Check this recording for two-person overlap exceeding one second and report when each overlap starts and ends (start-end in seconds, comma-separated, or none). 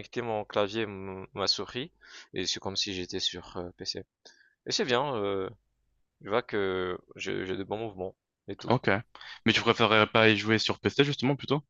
none